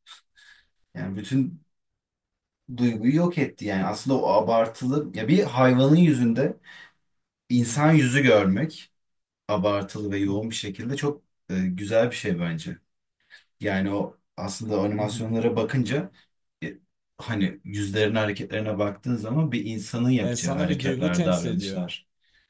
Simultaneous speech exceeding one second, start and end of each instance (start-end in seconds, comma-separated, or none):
20.2-21.9